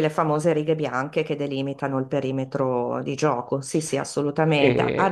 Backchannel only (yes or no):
yes